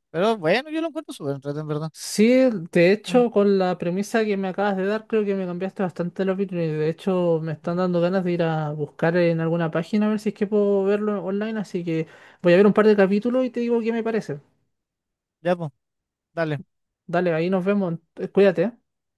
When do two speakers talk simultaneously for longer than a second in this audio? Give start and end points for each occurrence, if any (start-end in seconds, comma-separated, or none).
none